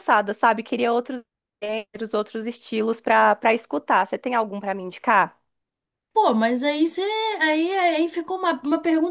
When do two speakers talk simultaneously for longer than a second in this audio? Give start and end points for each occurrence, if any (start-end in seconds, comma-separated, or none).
none